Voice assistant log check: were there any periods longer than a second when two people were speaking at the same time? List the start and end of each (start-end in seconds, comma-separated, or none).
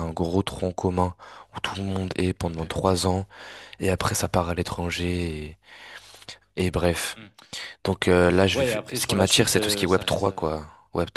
8.5-10.5